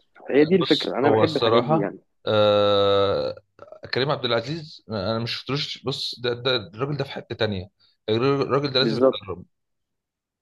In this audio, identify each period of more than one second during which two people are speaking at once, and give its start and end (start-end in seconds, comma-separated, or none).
0.6-2.0